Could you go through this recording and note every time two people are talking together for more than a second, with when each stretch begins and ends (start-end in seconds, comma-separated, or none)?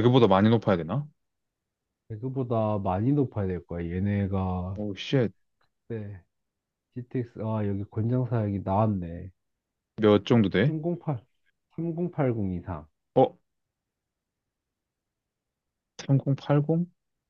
none